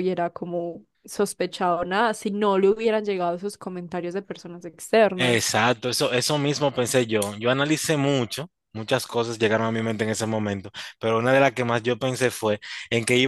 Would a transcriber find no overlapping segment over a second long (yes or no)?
yes